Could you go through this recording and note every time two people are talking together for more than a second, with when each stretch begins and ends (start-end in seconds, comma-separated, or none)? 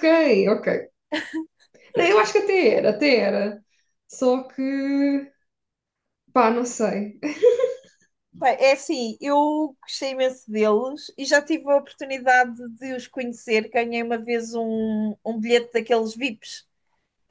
none